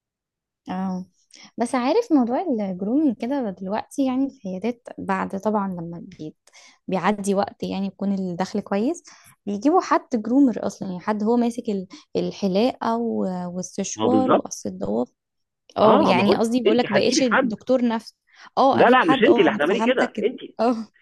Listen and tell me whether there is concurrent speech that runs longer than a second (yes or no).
yes